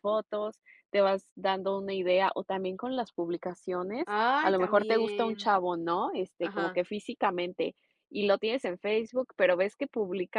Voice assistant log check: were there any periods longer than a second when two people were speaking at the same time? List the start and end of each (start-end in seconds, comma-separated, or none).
4.1-5.5